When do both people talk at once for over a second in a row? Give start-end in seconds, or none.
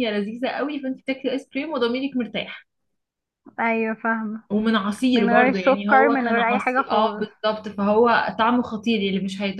5.1-7.3